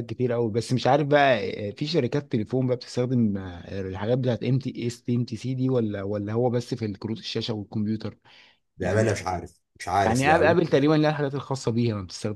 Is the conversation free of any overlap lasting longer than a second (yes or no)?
yes